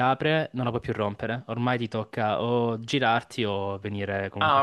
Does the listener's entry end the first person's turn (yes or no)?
yes